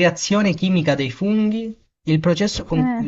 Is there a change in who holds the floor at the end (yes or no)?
no